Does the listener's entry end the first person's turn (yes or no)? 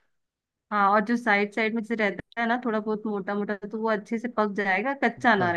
yes